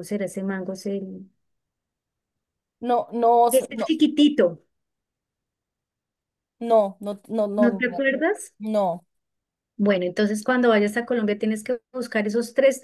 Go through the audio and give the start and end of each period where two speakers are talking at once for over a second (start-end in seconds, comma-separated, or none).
none